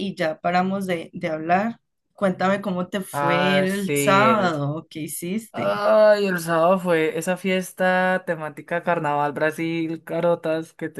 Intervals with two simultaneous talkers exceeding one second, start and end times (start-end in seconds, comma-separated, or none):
3.1-4.5